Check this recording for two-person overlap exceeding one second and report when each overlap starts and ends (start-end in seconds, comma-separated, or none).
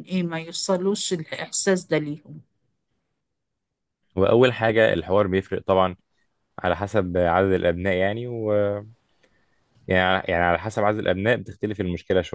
none